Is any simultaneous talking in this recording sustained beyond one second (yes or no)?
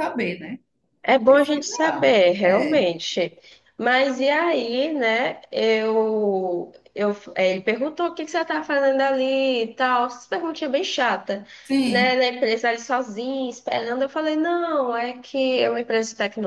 yes